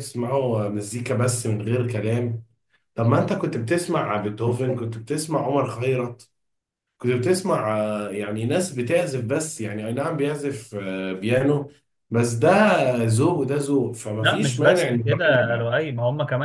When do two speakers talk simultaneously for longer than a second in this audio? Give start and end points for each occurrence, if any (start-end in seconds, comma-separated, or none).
14.2-15.7